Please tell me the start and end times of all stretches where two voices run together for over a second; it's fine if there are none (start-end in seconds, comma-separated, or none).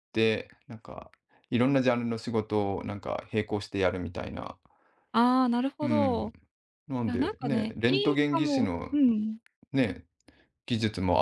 7.1-8.9